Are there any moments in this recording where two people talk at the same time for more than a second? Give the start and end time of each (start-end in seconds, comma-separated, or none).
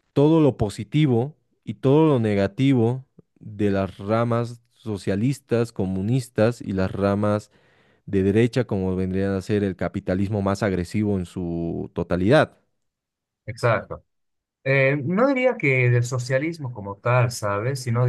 none